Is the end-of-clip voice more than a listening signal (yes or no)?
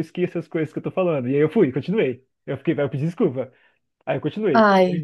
no